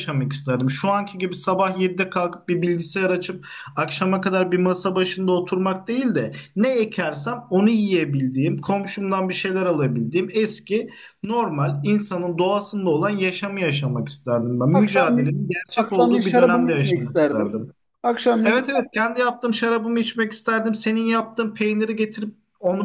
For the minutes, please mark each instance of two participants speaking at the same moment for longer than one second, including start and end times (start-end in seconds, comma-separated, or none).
14.7-17.6